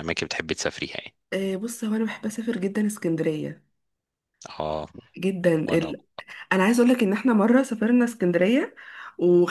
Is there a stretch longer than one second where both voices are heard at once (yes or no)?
no